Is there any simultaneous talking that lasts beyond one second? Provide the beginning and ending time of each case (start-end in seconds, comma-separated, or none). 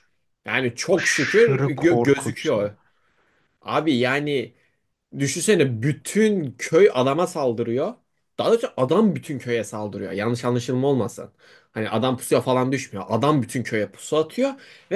0.9-2.7